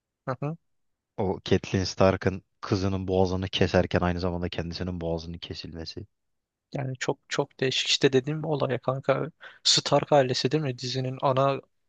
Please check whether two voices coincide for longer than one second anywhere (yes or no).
no